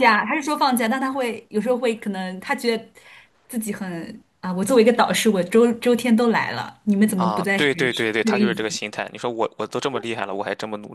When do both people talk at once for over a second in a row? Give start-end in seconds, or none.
7.2-8.6